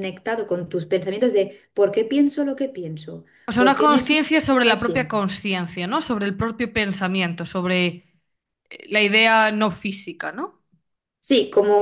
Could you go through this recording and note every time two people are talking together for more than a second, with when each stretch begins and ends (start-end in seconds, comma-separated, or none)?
3.5-5.2